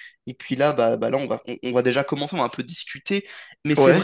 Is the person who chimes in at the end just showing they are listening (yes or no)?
yes